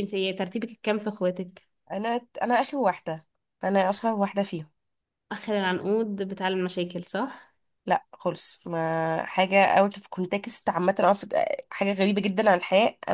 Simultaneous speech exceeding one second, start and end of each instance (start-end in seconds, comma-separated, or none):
none